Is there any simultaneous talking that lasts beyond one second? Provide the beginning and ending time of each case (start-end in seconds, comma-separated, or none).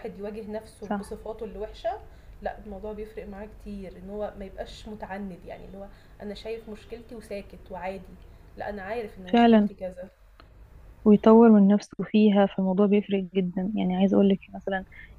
none